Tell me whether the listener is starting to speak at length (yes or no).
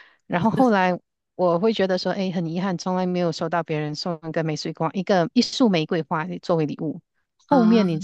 no